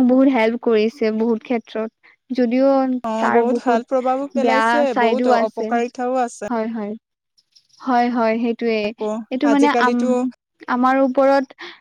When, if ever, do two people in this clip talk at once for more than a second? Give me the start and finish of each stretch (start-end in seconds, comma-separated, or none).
3.2-5.7